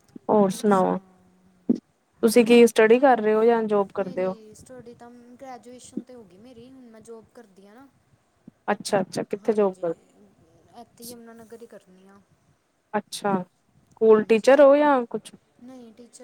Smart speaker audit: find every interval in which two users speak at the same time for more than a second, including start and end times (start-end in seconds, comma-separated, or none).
none